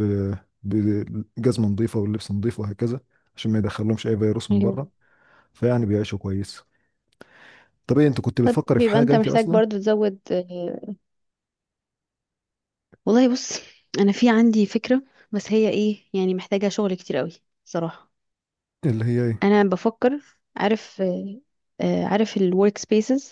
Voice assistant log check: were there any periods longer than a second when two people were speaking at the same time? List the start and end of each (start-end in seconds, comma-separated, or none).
8.4-9.6